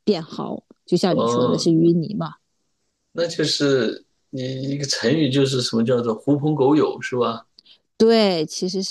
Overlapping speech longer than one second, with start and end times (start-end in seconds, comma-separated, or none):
none